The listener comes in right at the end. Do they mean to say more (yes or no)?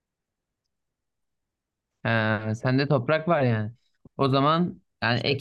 no